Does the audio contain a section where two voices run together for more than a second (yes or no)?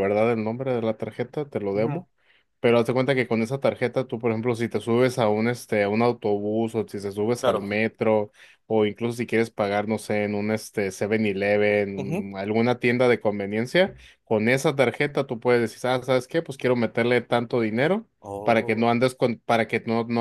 no